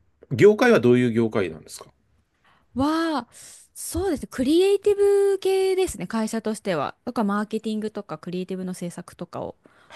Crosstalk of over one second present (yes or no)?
no